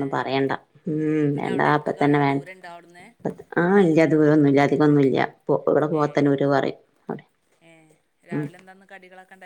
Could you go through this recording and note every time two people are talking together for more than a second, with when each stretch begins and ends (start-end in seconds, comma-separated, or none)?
1.2-3.0